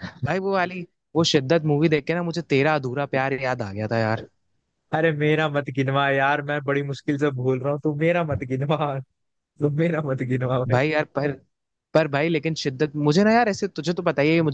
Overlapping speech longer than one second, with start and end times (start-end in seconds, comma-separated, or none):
none